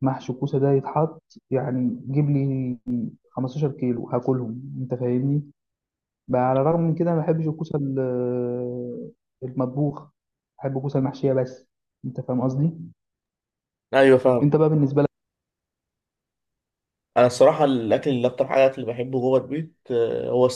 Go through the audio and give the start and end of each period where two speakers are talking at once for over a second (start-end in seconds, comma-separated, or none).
none